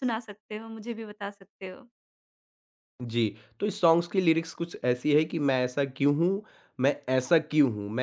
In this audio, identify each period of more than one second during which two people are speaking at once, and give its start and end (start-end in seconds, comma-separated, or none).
none